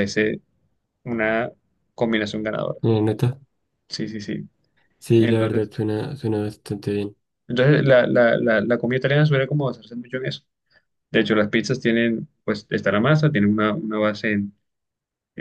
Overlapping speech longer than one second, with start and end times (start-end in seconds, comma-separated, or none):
none